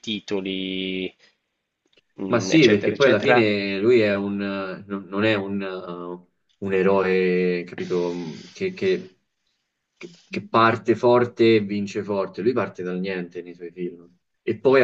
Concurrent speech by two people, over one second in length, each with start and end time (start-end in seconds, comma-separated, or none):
2.3-3.6